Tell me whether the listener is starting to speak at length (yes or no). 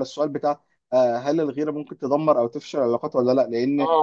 no